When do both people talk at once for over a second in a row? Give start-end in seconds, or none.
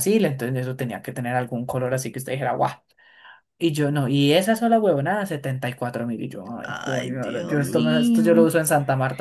6.6-8.5